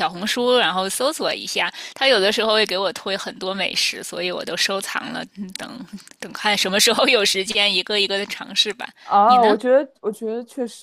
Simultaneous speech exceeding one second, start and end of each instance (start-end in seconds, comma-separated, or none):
none